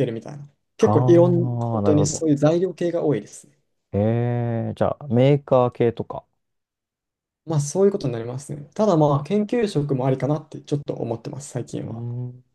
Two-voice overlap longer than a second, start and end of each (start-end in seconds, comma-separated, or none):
0.8-2.3